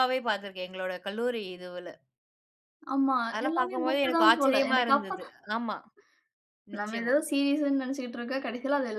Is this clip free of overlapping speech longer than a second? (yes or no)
no